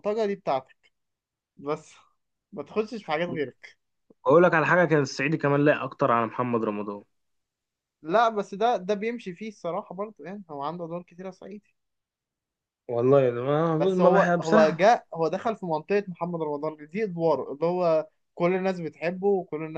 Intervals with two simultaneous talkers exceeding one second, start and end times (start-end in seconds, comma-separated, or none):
13.8-15.0